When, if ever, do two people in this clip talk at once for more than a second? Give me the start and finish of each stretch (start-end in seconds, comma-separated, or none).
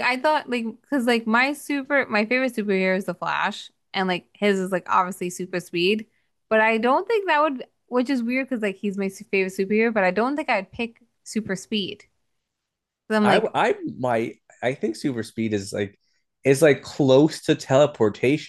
none